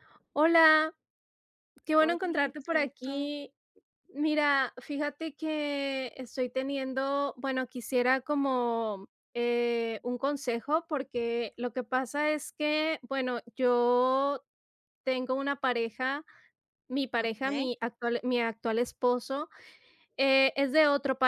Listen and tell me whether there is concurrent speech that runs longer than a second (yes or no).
yes